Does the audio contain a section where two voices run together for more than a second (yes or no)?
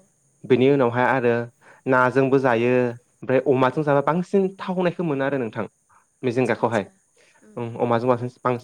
no